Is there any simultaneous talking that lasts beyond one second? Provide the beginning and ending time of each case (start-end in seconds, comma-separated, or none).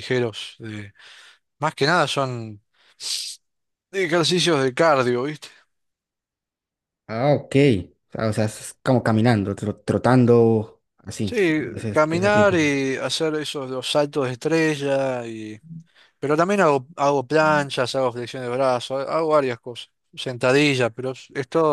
11.2-12.7